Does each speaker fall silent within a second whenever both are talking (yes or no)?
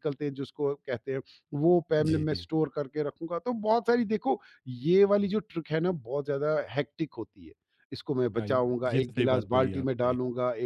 no